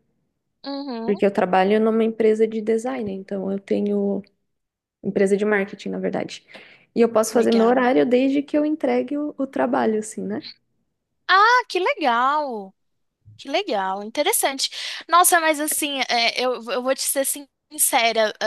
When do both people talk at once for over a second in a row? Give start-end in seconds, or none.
none